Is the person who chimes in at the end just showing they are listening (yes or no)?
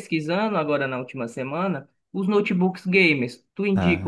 yes